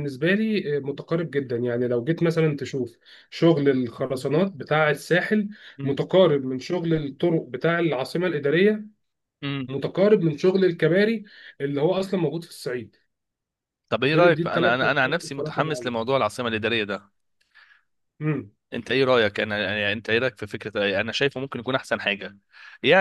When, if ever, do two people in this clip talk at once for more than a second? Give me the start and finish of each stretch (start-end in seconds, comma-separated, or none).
14.1-16.0